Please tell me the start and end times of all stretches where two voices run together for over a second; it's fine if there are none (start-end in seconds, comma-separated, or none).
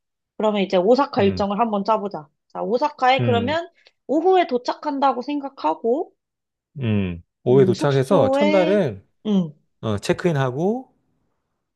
7.5-8.9